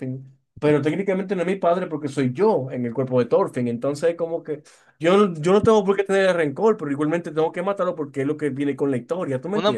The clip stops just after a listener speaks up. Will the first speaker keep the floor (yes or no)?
no